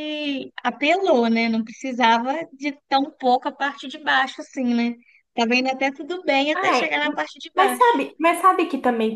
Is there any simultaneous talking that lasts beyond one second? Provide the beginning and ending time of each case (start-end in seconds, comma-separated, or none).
none